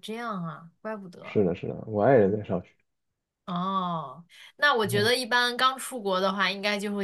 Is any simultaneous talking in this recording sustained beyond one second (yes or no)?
no